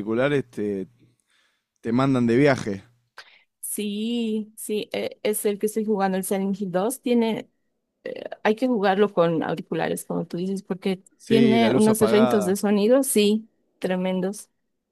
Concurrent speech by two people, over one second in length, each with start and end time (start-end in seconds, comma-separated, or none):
11.2-12.6